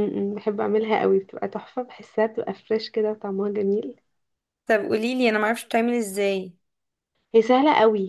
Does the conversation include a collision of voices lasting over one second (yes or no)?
no